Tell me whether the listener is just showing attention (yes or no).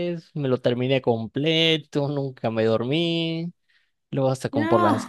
yes